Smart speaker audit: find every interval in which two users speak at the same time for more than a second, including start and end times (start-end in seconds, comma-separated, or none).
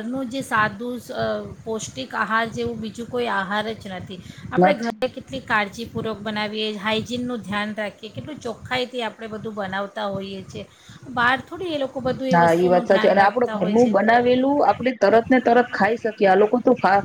none